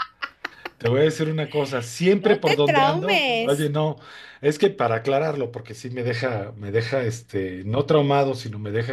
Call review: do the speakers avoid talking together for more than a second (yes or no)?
no